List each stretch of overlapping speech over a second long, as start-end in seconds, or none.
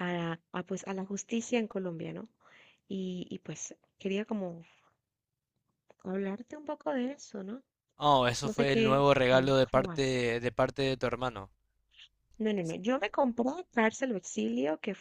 8.4-10.2